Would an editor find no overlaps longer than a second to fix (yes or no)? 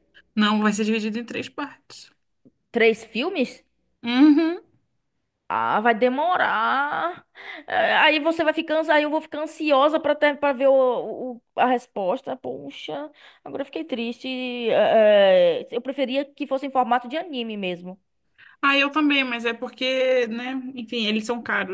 yes